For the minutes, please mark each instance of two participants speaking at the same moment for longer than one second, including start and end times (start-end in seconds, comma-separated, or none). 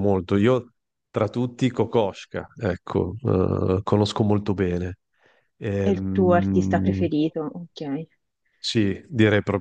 5.8-7.1